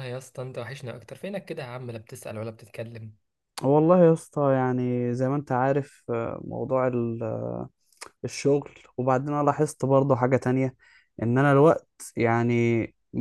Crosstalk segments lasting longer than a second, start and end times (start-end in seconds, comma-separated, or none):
none